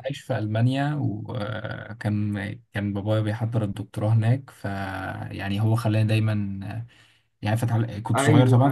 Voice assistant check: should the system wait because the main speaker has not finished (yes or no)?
no